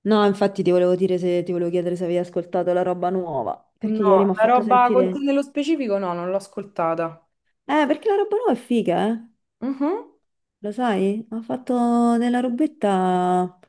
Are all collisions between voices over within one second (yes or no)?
no